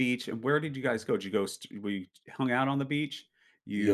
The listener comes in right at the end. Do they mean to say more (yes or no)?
yes